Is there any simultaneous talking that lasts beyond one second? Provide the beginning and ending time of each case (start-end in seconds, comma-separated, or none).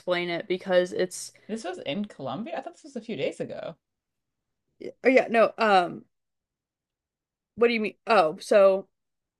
none